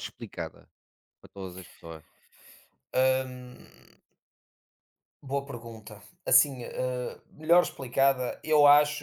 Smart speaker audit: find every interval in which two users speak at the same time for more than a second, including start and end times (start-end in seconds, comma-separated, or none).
none